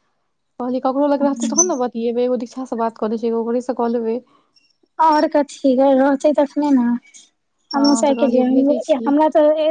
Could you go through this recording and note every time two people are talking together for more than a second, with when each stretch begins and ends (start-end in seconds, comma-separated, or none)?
7.8-9.1